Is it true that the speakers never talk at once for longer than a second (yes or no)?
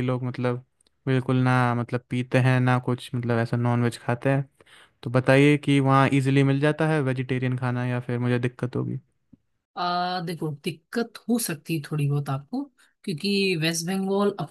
yes